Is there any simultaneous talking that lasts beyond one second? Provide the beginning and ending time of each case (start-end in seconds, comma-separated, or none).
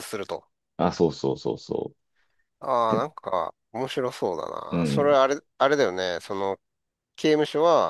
none